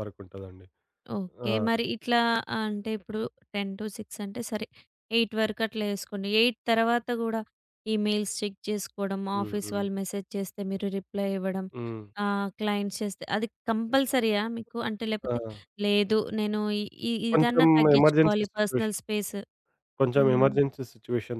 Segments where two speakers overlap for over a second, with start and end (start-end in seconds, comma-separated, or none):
17.3-19.0